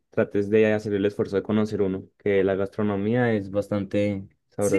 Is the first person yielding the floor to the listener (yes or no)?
yes